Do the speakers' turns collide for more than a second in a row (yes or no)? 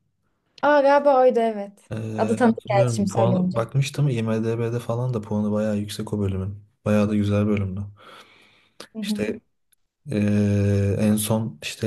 yes